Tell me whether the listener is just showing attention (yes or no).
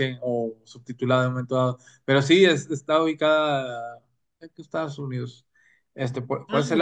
yes